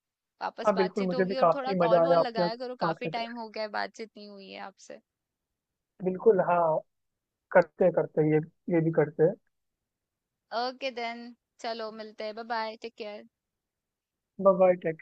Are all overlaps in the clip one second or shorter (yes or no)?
no